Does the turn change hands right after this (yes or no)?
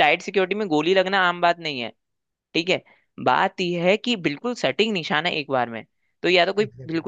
no